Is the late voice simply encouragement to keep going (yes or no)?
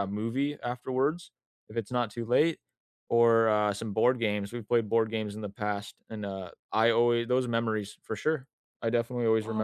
no